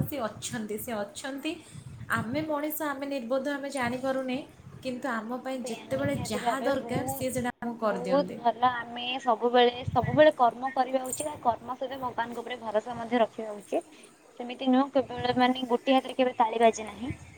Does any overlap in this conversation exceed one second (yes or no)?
yes